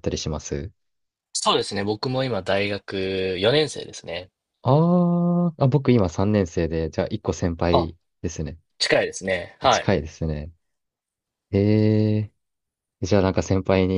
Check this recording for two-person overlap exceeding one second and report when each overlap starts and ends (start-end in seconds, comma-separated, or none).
none